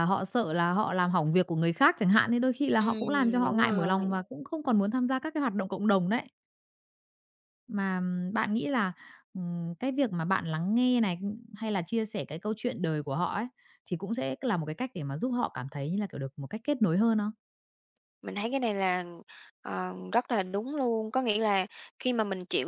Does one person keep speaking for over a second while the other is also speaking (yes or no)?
yes